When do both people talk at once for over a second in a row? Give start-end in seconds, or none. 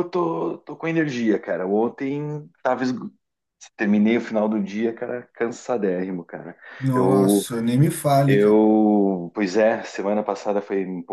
none